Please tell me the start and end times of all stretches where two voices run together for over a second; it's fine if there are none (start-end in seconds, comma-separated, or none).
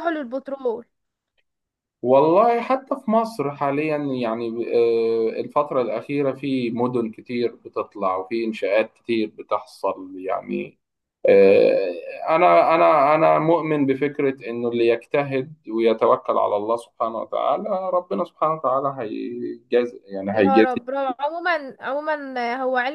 none